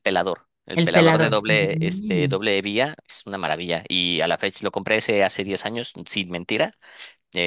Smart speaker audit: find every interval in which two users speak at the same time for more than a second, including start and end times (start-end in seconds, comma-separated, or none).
0.7-2.4